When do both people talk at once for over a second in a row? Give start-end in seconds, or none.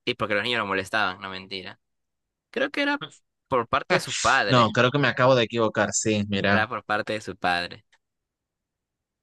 none